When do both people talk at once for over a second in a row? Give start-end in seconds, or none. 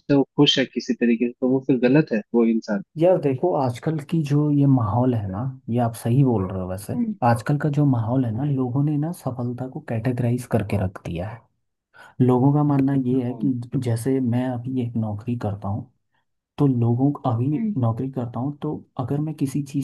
none